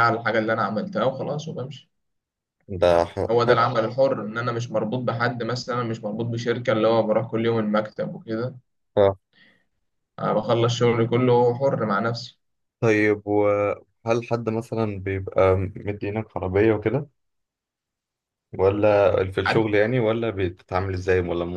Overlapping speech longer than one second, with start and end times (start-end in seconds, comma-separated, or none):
none